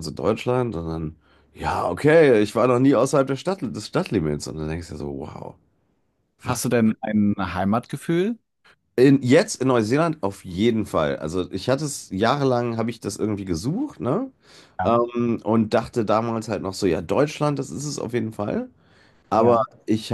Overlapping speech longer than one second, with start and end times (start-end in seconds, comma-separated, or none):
none